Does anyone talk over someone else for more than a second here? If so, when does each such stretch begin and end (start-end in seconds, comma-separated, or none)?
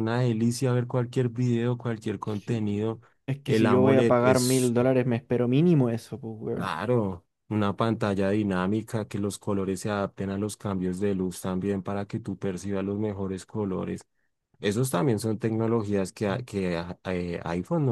3.5-4.7